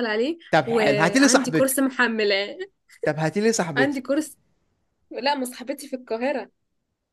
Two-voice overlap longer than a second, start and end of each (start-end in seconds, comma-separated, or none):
0.5-2.0